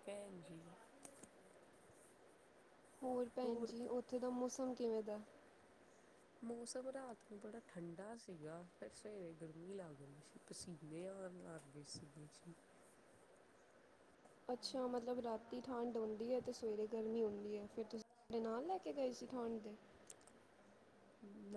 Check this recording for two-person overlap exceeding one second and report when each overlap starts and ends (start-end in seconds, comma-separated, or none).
none